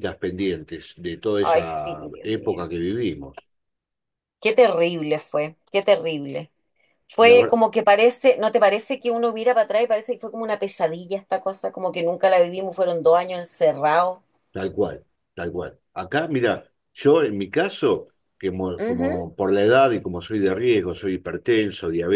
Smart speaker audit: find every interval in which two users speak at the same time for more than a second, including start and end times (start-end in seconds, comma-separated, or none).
1.4-2.6